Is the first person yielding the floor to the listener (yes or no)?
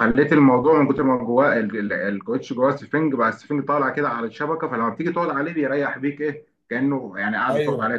yes